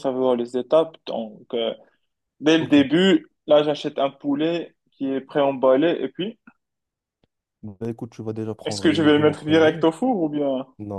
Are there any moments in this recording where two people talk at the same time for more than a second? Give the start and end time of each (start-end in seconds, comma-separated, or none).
8.7-9.9